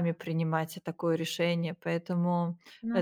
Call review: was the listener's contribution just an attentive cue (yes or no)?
yes